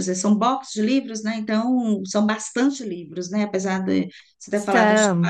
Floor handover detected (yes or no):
no